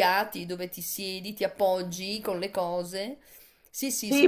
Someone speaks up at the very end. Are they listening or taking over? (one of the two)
taking over